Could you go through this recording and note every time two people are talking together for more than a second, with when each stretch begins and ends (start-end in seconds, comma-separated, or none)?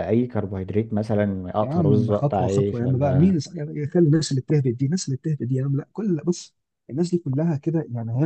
1.6-3.4